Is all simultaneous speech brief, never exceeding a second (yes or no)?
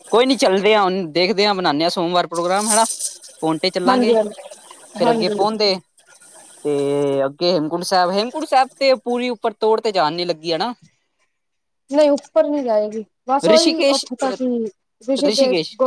yes